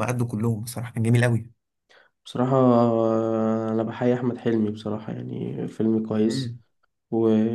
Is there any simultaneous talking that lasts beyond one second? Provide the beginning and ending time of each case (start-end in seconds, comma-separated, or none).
none